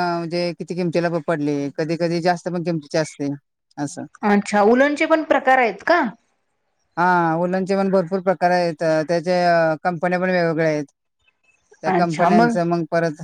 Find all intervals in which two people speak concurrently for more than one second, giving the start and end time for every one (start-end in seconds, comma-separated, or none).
none